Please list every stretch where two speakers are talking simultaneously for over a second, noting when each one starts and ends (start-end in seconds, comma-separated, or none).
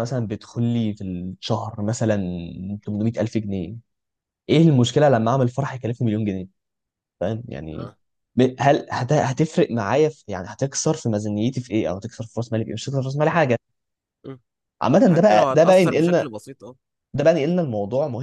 15.1-16.3